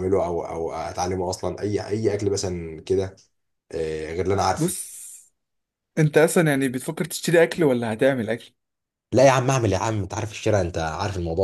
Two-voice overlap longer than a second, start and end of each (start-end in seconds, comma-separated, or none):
none